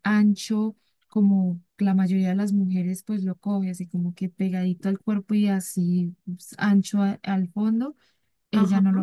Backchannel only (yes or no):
yes